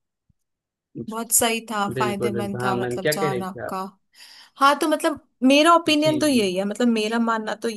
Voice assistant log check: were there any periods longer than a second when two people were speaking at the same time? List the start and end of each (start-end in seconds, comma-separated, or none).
1.9-3.7